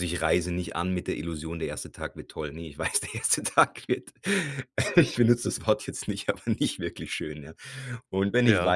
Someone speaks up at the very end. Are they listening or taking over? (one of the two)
listening